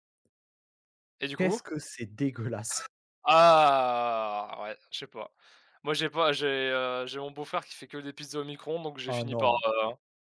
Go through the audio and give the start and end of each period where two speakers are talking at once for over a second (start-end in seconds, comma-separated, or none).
none